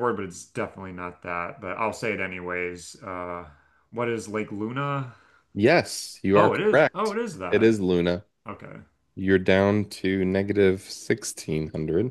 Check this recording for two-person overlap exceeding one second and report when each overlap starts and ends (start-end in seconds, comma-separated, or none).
6.3-7.8